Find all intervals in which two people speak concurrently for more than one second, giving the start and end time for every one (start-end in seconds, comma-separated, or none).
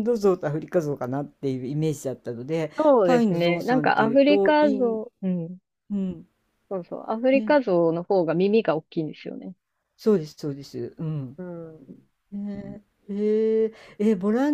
2.8-5.0